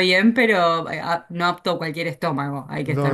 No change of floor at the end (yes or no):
no